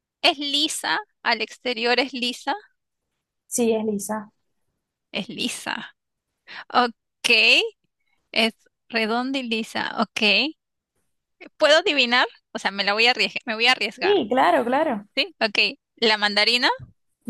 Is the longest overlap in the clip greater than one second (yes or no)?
no